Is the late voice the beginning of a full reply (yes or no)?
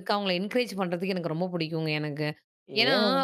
no